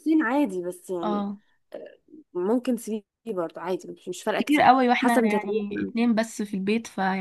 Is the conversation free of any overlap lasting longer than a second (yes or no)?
no